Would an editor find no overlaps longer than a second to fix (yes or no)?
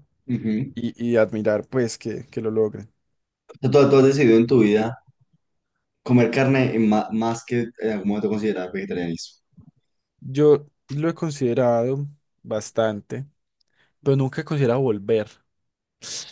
yes